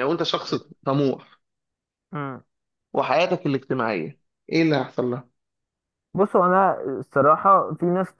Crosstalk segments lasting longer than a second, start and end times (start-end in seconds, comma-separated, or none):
none